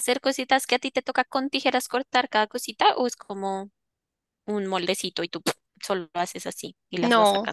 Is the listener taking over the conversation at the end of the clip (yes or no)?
yes